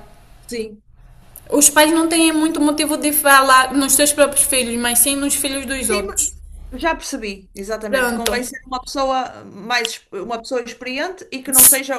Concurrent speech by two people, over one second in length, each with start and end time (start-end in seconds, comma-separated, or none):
none